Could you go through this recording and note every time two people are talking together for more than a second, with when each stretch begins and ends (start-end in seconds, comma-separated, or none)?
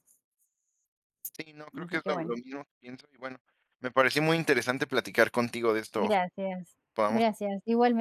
none